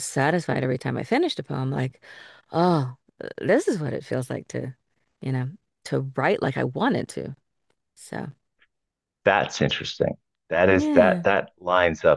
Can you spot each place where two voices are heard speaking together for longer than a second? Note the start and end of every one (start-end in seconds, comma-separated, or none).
none